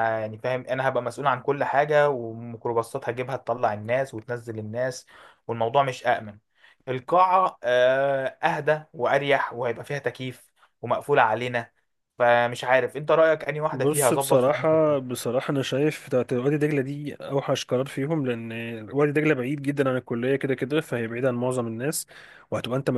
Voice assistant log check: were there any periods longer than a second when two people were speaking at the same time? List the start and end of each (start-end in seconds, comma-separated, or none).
13.7-15.1